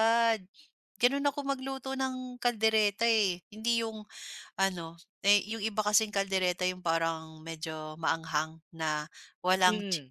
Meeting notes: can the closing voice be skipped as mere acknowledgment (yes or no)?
yes